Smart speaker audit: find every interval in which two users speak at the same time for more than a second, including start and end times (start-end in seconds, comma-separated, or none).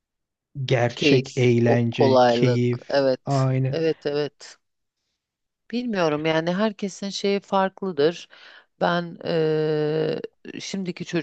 0.9-3.8